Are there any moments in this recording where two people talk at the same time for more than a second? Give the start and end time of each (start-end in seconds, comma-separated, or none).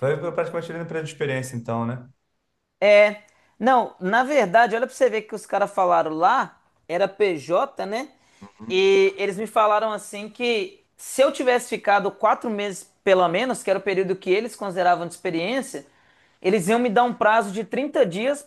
none